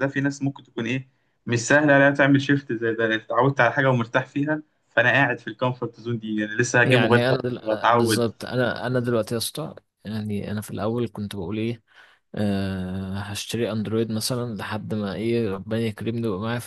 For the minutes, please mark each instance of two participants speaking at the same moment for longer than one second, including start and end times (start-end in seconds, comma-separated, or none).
6.8-8.3